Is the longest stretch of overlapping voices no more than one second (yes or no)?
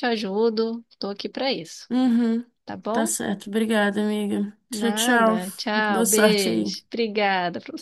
no